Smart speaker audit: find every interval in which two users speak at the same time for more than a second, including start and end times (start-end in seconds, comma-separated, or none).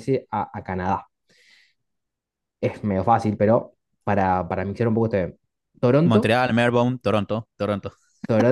none